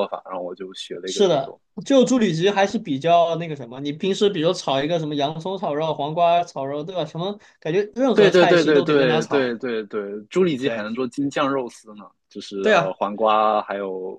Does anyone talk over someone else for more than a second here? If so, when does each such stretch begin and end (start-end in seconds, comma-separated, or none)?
8.1-9.6